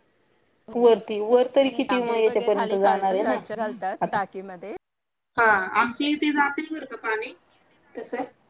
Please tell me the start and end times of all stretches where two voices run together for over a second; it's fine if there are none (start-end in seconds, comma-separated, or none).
1.6-3.4